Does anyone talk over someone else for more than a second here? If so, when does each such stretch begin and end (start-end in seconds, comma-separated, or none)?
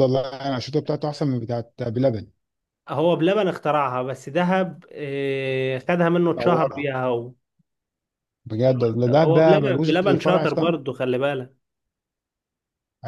8.7-10.8